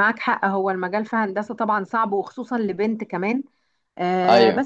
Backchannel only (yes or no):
yes